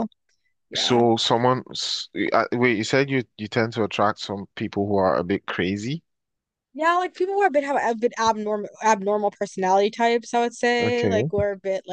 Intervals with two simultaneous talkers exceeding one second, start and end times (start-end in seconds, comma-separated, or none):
none